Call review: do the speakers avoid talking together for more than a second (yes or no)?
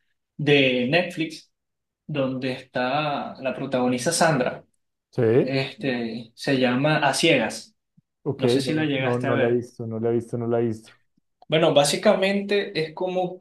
no